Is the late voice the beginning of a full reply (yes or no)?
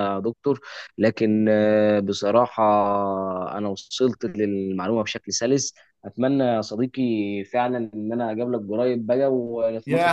yes